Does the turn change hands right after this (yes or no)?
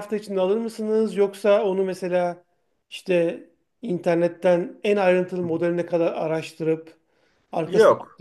no